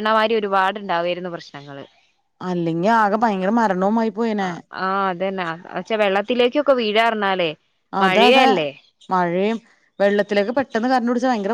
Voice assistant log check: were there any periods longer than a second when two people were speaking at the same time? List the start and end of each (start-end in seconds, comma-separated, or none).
none